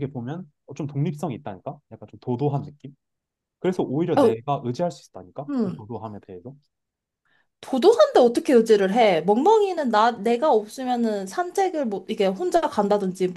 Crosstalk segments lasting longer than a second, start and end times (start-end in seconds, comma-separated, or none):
none